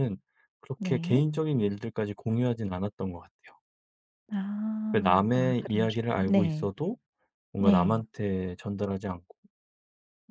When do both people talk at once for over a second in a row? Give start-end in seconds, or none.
4.9-6.7